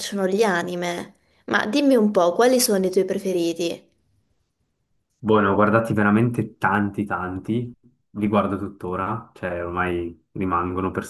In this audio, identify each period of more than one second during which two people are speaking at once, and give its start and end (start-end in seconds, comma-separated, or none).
none